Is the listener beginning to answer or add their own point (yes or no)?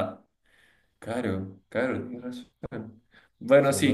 no